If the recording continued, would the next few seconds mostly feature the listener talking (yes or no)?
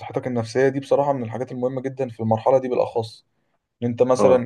no